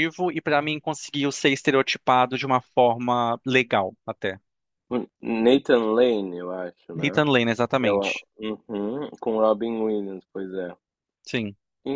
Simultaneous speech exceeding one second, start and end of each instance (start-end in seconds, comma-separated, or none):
none